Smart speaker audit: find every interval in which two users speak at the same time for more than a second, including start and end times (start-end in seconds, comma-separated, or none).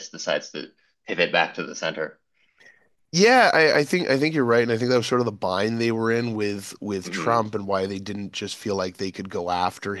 none